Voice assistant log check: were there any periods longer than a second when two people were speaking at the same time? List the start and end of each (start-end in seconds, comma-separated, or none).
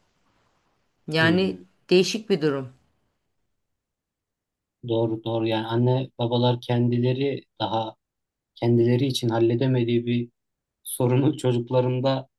none